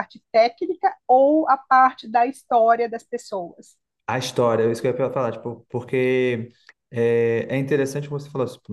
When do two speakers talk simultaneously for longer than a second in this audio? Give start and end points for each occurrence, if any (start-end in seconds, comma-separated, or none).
none